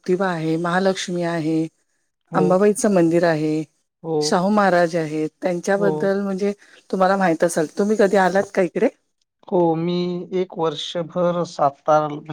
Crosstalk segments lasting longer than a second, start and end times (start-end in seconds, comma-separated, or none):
none